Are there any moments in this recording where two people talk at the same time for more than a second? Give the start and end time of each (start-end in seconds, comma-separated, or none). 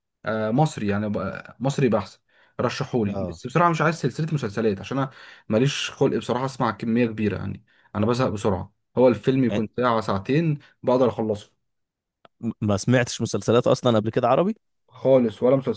none